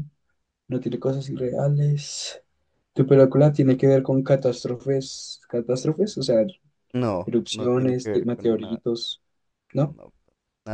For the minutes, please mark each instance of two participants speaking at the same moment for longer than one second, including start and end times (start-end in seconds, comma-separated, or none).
7.2-8.8